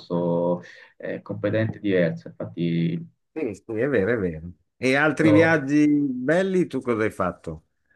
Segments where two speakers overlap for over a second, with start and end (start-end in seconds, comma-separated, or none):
none